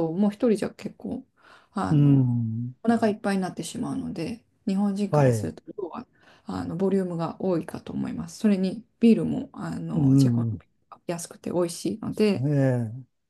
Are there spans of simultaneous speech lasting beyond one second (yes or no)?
no